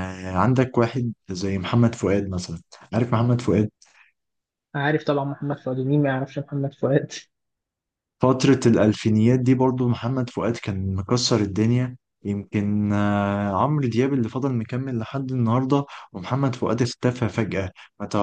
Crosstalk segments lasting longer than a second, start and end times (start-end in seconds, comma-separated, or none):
none